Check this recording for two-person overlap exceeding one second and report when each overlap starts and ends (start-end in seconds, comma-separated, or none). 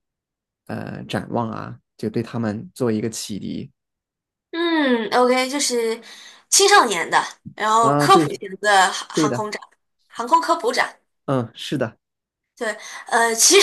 none